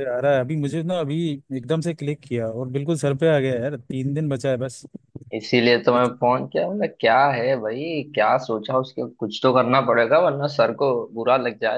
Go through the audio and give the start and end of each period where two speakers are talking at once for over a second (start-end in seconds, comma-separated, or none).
none